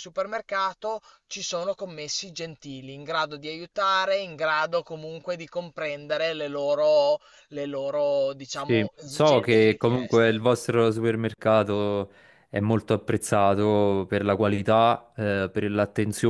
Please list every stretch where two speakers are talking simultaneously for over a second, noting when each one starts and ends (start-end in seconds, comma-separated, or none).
8.5-10.5